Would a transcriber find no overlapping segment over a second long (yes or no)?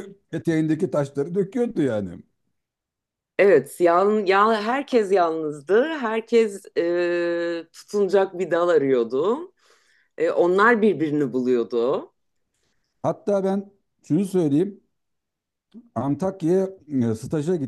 yes